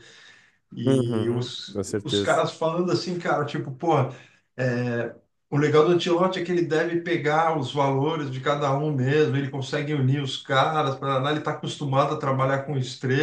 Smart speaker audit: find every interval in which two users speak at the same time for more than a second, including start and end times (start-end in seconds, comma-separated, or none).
0.8-2.4